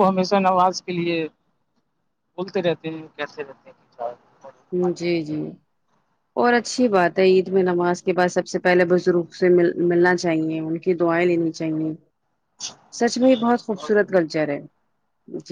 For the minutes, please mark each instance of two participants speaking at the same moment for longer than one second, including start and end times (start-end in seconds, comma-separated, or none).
none